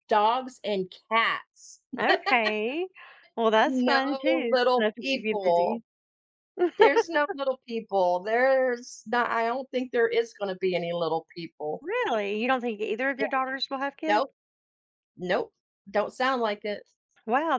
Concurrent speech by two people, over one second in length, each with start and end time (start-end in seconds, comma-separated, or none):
3.6-5.8